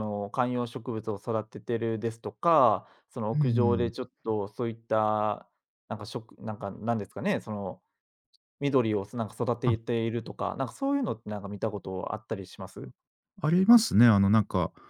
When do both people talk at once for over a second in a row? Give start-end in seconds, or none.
none